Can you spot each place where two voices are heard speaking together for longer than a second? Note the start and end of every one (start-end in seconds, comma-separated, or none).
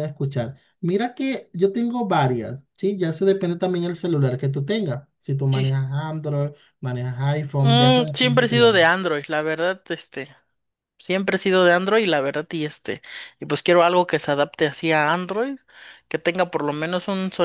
7.6-8.9